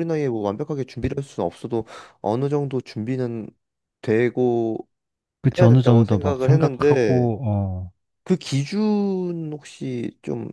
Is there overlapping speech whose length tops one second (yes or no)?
yes